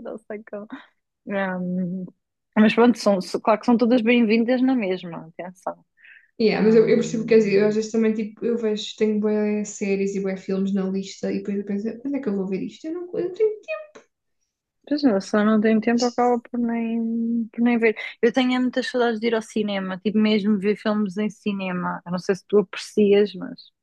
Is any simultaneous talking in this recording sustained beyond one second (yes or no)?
yes